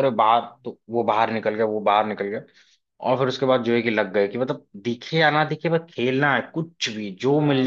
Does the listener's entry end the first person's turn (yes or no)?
yes